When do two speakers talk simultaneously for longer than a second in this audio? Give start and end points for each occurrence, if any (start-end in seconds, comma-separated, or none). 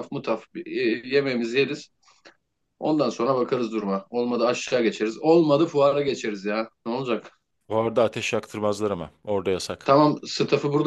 none